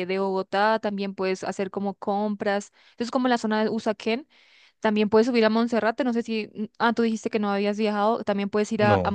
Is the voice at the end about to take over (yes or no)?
no